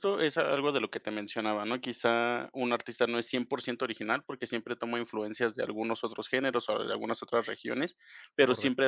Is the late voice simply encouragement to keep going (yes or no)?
yes